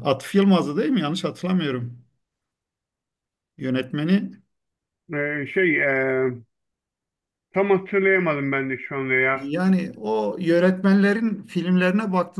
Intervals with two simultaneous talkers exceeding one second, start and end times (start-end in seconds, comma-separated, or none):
none